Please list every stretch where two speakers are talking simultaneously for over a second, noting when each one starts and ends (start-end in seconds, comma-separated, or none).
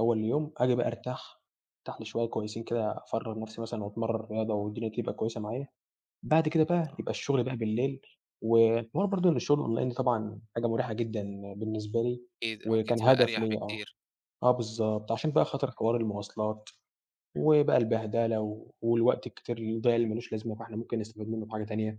12.6-13.9